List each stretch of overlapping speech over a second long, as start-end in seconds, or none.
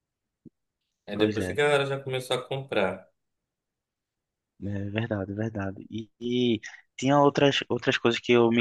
none